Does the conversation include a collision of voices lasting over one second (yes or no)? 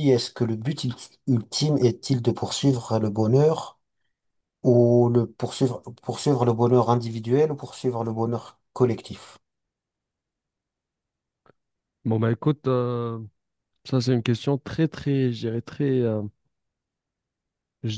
no